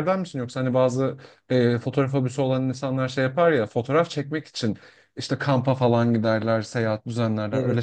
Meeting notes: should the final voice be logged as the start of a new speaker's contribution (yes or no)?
yes